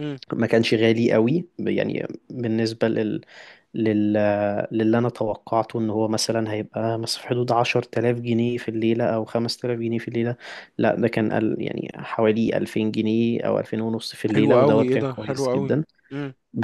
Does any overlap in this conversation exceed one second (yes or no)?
yes